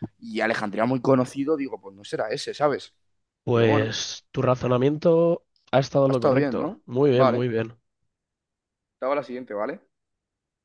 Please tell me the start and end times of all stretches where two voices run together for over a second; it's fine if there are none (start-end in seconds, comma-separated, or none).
6.1-7.4